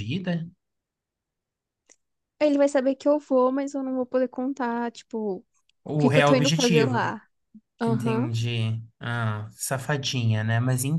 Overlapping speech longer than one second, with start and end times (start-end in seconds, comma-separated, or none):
5.9-7.1